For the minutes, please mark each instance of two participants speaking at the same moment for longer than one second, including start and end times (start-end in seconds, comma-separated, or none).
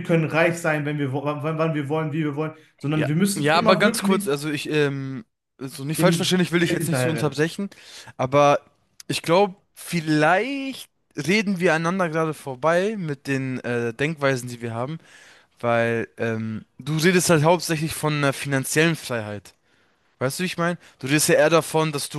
3.0-4.3, 6.0-7.4